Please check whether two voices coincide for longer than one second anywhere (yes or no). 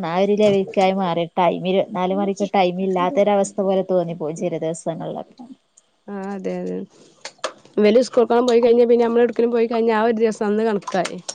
no